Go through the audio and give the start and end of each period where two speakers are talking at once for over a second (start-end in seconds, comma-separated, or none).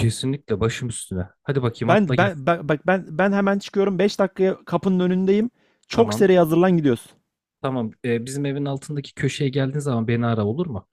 none